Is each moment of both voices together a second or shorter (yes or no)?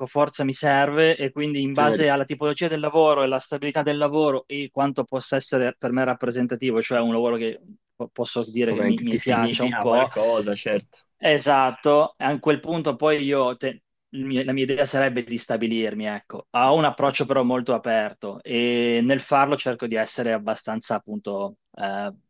no